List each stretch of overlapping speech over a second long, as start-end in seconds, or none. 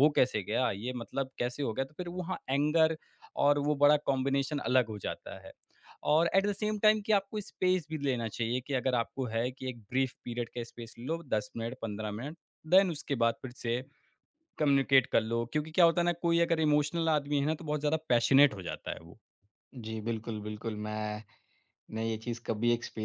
none